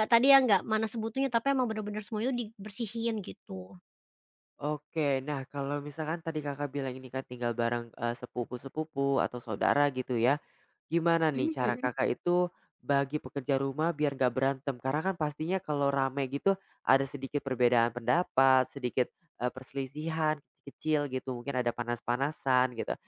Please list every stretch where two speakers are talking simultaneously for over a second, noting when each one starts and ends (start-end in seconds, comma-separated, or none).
none